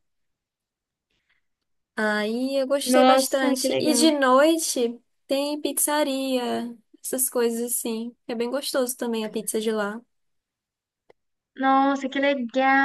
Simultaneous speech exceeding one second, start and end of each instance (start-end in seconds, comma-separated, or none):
2.8-4.1